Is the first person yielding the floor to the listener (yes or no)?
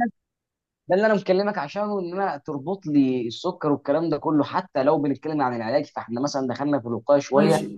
yes